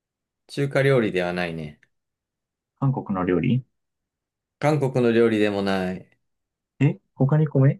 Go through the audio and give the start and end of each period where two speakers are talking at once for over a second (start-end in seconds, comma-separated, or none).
none